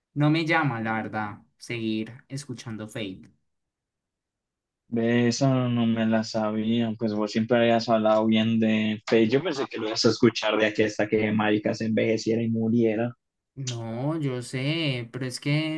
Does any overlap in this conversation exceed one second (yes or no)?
no